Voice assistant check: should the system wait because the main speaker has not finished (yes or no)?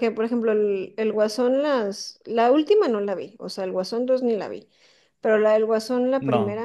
yes